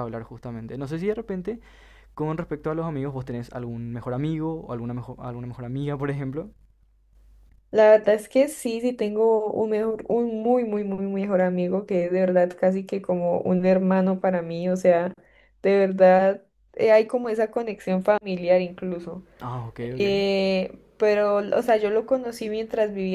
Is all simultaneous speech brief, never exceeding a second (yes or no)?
yes